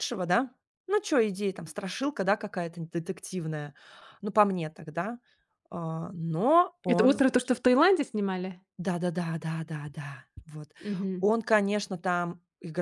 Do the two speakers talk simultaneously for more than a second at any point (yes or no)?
no